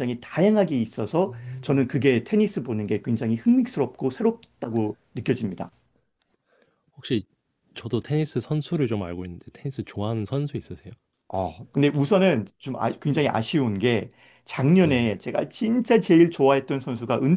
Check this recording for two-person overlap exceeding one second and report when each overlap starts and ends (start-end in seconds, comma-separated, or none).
none